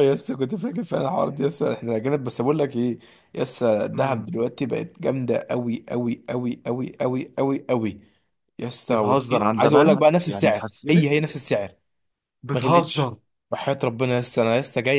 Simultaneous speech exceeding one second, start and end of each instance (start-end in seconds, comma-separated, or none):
8.9-11.1